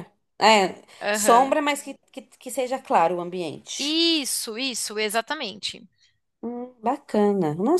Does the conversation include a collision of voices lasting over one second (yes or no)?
no